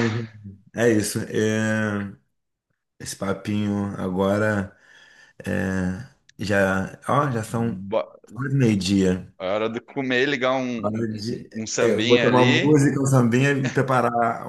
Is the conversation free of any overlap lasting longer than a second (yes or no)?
no